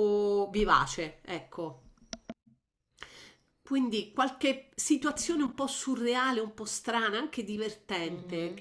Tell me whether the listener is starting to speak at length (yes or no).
yes